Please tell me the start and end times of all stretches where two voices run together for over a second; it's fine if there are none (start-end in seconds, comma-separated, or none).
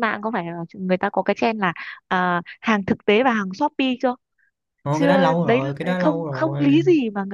4.9-6.8